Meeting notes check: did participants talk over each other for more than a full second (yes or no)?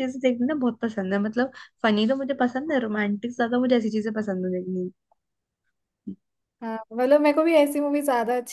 no